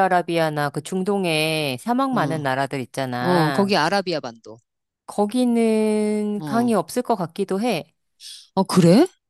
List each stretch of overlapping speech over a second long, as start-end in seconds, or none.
none